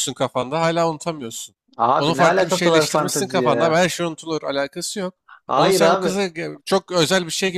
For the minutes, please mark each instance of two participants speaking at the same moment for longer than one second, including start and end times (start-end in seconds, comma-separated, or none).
2.0-3.8